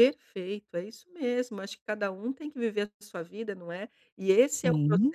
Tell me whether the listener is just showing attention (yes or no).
yes